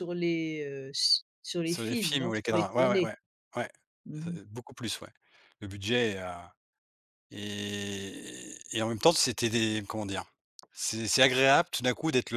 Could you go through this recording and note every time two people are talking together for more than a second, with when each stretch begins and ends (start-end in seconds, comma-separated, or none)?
1.6-3.1